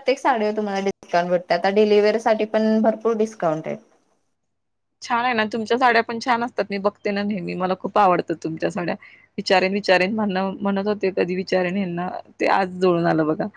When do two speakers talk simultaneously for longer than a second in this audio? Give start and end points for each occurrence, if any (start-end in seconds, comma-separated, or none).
none